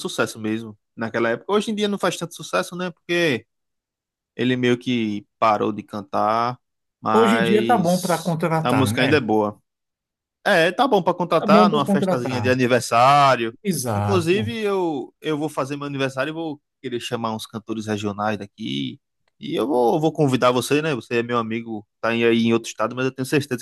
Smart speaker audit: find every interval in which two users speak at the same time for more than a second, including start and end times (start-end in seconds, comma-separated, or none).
7.1-9.2, 11.4-12.6